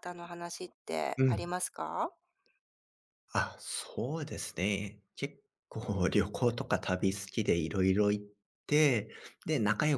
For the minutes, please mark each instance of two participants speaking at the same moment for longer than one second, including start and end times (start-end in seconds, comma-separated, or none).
none